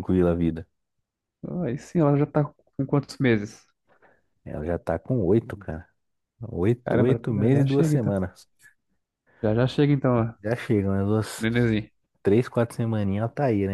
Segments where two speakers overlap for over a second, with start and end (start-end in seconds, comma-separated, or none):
6.8-8.1